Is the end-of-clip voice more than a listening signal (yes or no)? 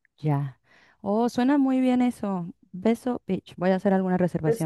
yes